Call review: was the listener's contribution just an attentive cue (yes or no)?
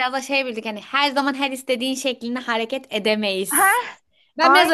no